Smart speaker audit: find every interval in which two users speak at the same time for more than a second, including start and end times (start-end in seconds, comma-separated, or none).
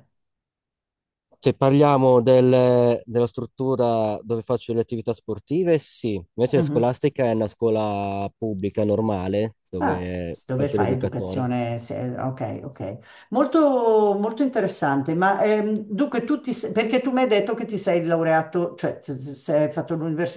9.8-11.5